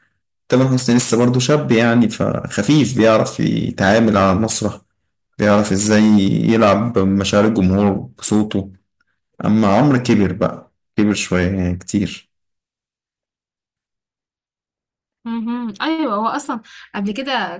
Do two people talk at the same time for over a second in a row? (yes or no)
no